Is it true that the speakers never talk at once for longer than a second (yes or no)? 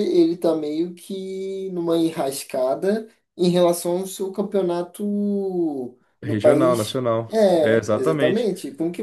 no